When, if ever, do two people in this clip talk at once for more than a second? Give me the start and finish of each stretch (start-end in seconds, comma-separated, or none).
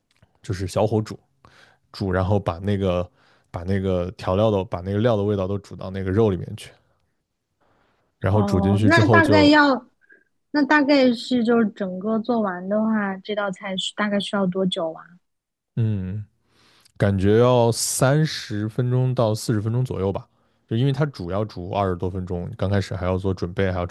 8.3-9.5